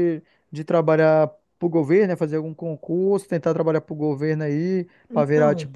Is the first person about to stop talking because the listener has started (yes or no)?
no